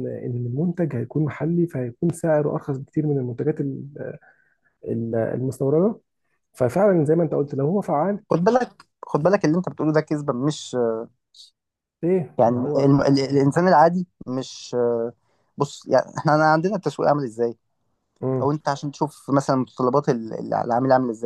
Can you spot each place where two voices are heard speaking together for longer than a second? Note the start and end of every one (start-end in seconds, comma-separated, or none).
none